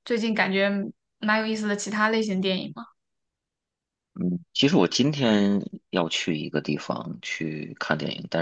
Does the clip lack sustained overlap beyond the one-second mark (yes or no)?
yes